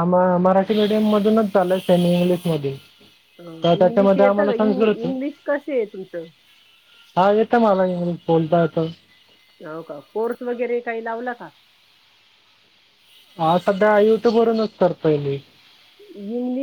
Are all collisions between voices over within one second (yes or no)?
yes